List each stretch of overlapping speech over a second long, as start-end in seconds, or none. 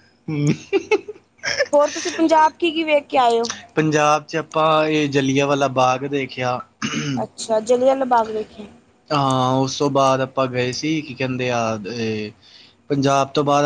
none